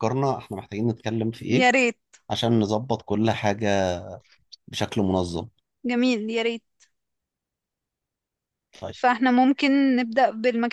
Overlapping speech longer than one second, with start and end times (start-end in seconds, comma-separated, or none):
none